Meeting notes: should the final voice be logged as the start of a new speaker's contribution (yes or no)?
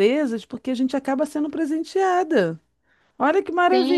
yes